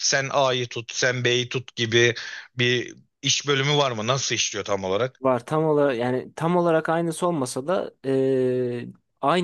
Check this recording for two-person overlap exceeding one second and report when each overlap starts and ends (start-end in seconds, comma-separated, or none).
none